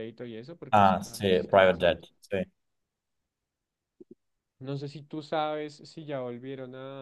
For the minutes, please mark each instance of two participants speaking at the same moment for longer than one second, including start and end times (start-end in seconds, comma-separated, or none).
0.7-2.1